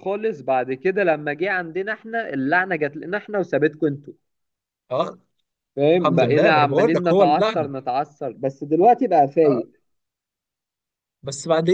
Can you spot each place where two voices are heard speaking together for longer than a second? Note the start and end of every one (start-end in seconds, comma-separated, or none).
6.0-7.7